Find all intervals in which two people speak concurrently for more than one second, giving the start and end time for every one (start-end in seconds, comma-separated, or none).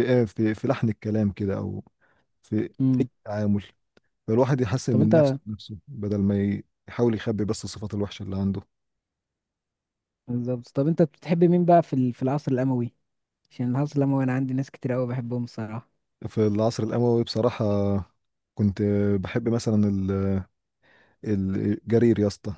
none